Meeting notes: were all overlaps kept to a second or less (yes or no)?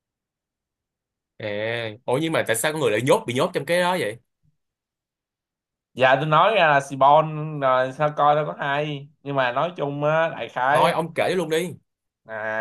yes